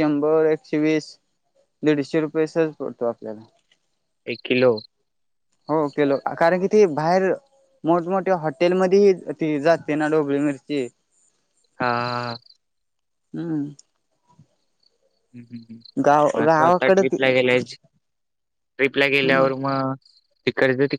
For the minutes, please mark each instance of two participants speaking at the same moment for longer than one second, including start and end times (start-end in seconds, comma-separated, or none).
16.1-17.7